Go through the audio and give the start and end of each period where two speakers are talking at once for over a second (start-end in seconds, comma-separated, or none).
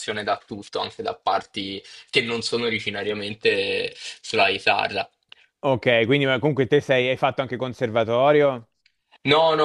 none